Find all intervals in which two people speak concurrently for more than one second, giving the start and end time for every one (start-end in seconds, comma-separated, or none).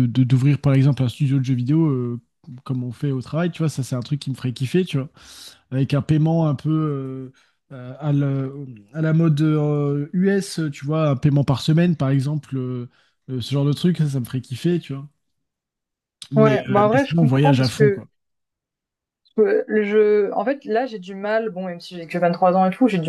16.3-18.0